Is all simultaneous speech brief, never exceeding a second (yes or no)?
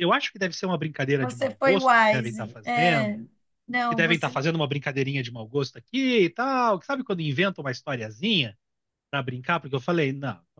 no